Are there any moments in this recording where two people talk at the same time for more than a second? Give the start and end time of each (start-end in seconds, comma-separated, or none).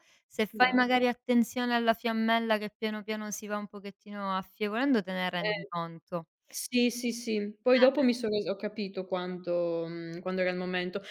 none